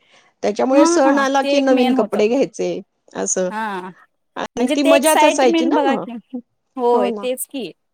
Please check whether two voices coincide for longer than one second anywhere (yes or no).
yes